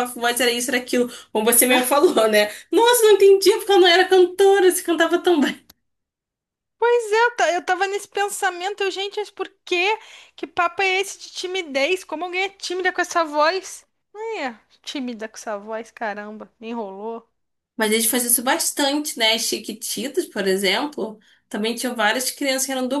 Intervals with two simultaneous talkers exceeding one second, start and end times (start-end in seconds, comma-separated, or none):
none